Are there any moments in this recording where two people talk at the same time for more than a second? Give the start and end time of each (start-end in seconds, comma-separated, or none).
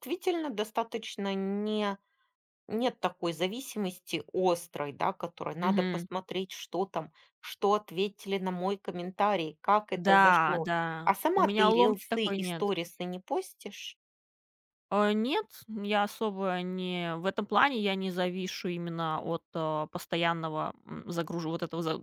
10.1-12.7